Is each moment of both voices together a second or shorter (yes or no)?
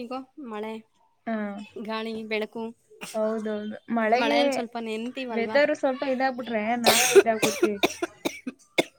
yes